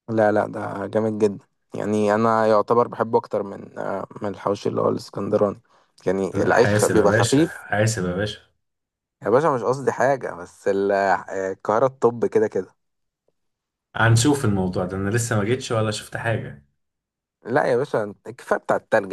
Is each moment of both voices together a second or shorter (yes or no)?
no